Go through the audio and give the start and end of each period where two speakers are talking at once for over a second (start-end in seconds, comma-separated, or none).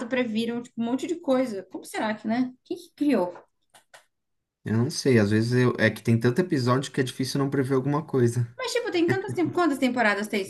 none